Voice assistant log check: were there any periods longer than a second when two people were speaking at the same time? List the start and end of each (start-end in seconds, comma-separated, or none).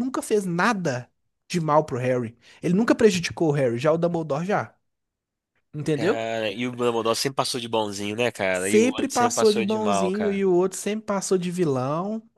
8.5-10.4